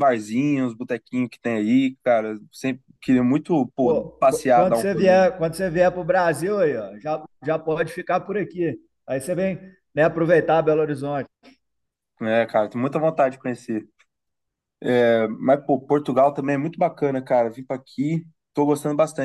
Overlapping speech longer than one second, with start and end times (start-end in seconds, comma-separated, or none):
3.8-5.3